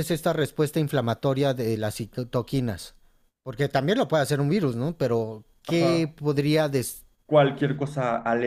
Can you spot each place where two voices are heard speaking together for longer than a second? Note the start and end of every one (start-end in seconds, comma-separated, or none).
none